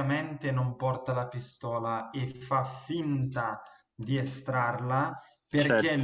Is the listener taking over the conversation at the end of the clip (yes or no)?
no